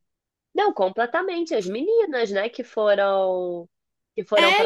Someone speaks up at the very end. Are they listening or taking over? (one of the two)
listening